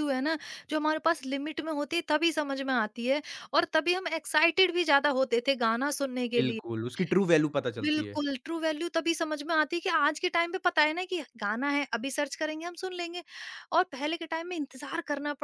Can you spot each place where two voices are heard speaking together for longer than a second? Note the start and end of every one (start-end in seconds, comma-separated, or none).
none